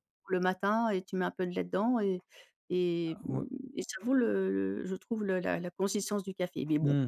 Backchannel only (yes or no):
no